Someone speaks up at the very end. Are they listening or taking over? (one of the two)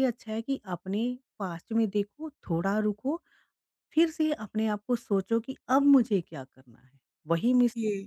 listening